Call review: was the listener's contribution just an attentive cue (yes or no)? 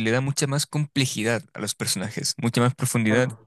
yes